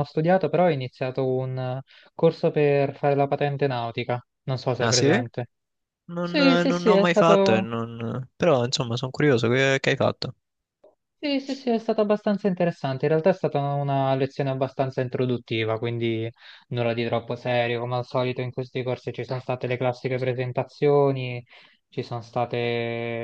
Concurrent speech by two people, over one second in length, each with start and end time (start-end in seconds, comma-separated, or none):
6.2-7.6